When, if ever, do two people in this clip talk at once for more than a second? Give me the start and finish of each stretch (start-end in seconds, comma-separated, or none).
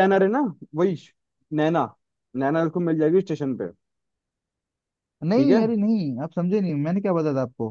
none